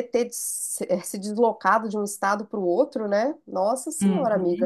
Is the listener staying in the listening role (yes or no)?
no